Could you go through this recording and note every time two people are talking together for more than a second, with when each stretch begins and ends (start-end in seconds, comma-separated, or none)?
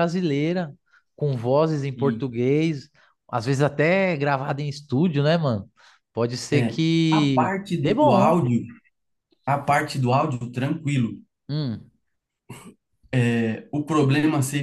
6.5-8.4